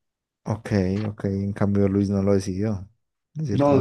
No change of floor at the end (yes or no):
no